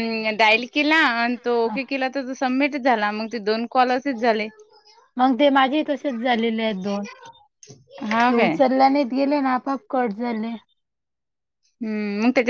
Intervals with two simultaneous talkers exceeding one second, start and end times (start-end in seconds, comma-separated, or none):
none